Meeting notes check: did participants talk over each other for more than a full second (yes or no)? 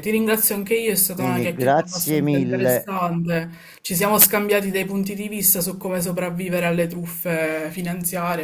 yes